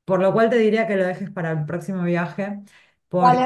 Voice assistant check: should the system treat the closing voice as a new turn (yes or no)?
yes